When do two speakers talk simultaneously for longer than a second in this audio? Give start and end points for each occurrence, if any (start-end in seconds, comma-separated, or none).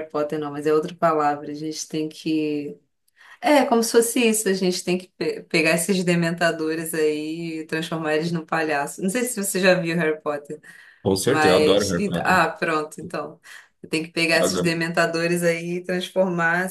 11.3-12.5